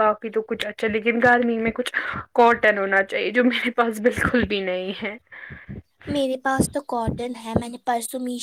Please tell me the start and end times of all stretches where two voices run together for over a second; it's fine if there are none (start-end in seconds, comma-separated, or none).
none